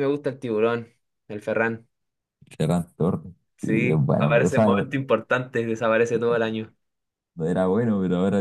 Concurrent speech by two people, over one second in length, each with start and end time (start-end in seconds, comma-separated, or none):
3.6-4.9